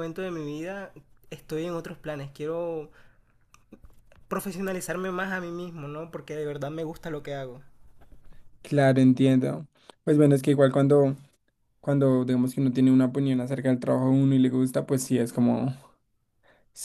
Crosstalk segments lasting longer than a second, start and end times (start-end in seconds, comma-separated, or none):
none